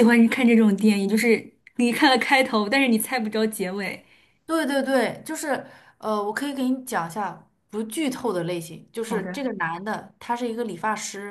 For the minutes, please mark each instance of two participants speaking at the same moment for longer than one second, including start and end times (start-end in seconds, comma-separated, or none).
none